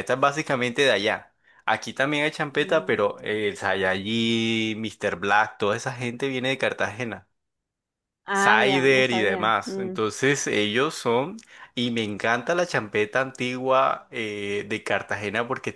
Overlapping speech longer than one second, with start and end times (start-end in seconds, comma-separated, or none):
8.3-10.0